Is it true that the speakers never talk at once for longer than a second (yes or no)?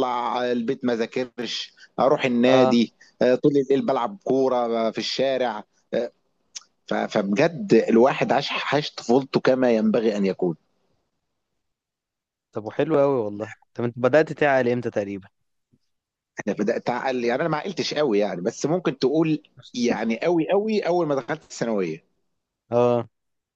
yes